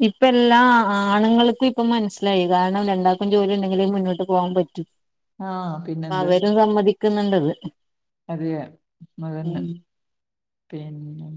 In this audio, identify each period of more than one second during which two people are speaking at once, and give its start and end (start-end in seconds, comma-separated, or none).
none